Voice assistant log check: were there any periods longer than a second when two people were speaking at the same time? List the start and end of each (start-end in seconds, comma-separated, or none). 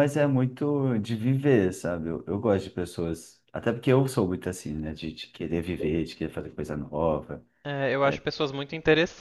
none